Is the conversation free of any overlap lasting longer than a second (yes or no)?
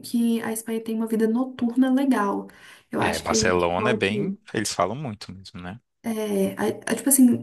no